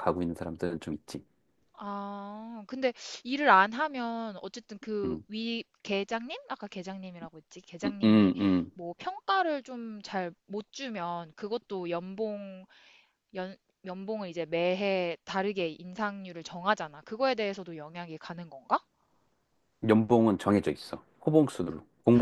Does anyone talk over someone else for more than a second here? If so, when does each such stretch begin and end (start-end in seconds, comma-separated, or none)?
none